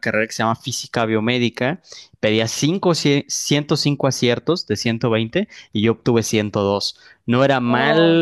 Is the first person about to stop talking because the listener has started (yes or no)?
no